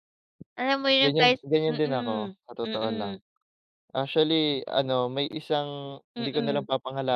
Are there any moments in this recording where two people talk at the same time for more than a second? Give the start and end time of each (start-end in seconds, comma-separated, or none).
1.0-3.1